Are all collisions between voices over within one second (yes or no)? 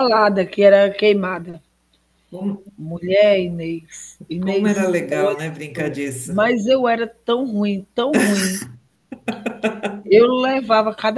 no